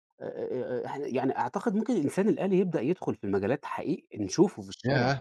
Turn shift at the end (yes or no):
yes